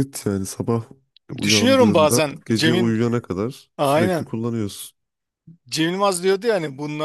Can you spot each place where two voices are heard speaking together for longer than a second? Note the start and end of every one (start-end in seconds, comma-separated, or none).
1.4-3.0